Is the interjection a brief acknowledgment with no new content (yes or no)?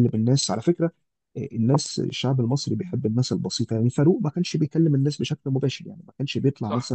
yes